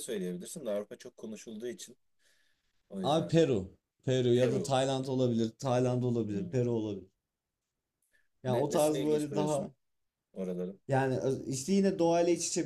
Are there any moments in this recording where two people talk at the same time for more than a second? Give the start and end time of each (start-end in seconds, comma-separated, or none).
8.5-9.7